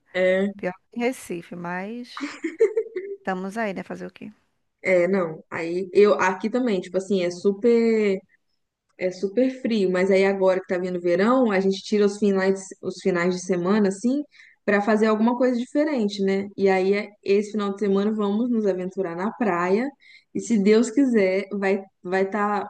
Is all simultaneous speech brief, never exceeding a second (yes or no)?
yes